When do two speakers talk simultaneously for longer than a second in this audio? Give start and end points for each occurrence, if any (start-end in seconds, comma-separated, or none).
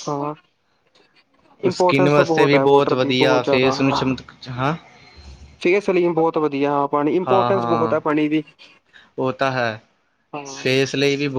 1.7-3.7